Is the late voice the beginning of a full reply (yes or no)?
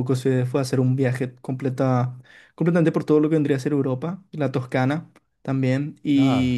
no